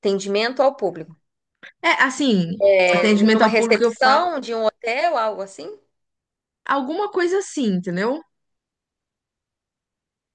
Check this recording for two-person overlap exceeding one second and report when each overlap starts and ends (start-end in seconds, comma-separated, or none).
2.6-4.3